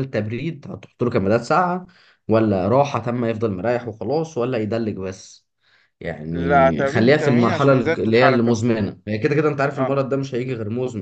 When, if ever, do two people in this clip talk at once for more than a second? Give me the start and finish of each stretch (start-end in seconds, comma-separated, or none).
6.3-8.6